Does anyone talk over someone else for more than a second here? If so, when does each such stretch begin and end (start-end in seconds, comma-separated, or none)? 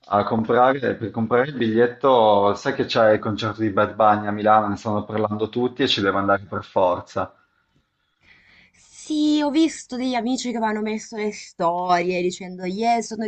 none